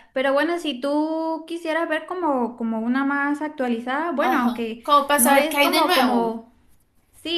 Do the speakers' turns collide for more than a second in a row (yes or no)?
yes